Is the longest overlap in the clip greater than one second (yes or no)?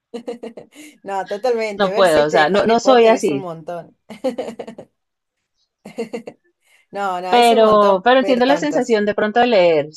yes